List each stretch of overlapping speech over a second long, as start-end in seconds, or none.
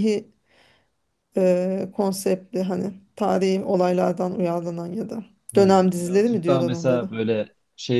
5.6-7.1